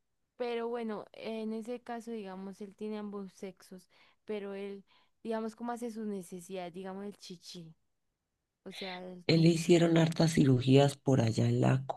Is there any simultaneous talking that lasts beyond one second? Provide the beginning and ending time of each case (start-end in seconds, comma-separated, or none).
none